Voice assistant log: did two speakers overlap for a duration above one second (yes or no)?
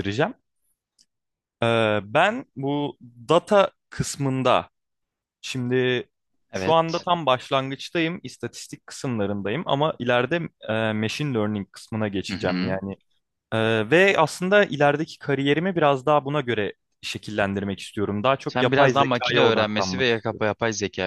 yes